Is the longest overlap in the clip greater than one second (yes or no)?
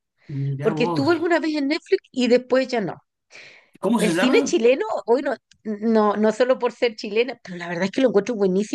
no